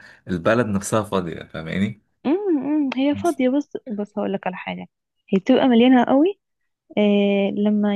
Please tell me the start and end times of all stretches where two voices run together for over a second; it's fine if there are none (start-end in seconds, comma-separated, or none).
none